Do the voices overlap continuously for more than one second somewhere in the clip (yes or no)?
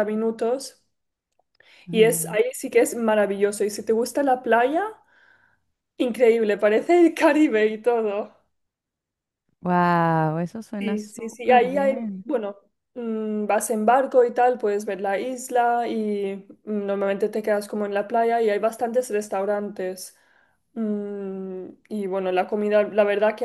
yes